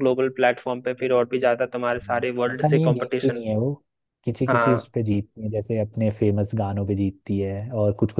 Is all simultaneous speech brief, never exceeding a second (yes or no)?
no